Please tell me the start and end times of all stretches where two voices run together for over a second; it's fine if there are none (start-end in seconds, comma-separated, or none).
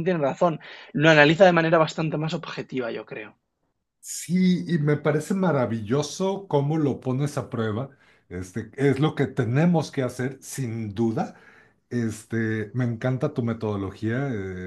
none